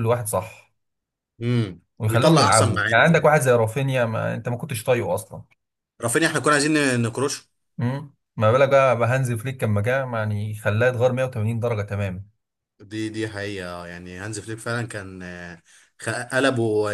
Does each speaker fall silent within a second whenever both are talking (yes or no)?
no